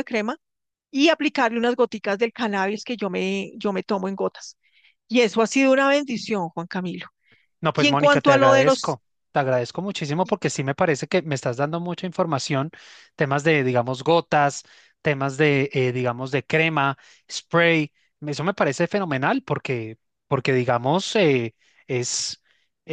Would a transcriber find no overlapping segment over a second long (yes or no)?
no